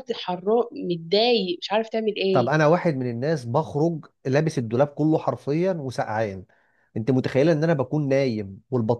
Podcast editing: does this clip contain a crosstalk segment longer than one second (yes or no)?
no